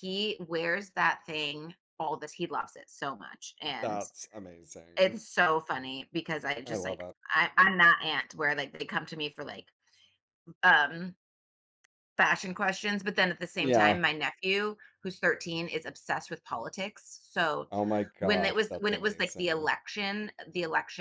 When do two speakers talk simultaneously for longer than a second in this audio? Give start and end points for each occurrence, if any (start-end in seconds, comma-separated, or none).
18.2-19.7